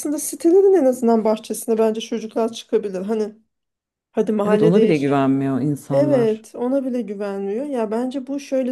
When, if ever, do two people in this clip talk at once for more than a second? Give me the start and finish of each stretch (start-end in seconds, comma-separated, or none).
none